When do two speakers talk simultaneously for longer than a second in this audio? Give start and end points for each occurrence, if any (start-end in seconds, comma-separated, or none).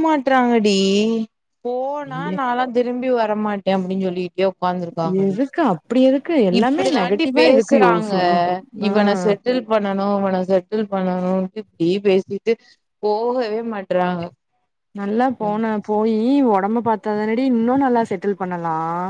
6.6-8.1